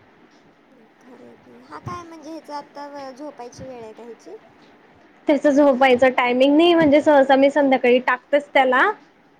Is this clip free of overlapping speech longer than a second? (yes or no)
no